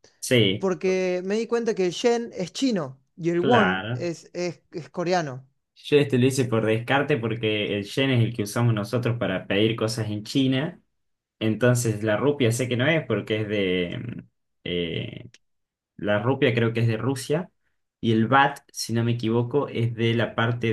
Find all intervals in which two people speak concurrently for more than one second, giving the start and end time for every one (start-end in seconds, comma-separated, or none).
none